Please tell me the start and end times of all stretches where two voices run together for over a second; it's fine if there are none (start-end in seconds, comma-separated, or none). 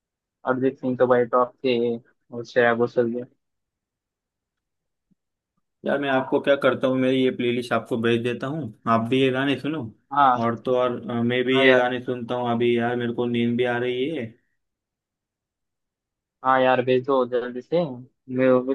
none